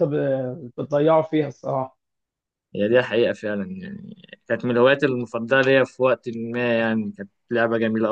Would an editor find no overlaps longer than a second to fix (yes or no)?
yes